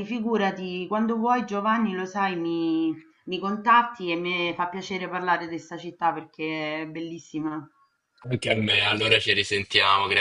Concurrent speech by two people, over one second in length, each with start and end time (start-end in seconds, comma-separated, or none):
none